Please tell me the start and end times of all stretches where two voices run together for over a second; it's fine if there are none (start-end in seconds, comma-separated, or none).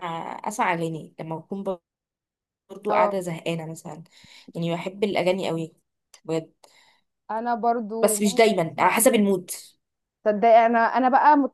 8.0-9.3